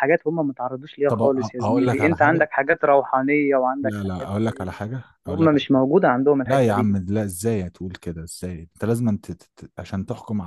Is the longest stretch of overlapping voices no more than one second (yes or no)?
no